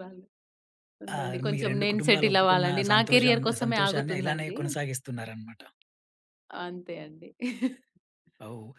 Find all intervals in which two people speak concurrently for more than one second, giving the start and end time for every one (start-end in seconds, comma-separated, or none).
1.2-4.6